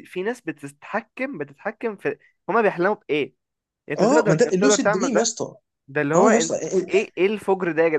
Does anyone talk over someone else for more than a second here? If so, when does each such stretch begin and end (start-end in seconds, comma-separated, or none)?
4.0-5.3